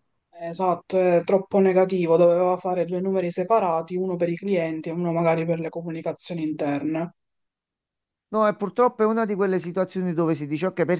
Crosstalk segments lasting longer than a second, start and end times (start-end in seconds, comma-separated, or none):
none